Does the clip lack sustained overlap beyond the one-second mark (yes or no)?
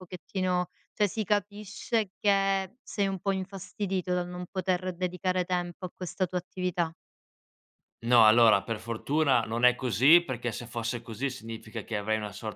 yes